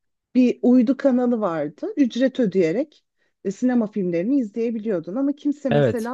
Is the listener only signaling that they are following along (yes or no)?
yes